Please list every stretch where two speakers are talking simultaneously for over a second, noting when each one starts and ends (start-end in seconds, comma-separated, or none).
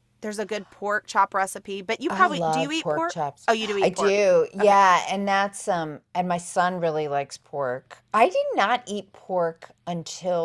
2.1-4.8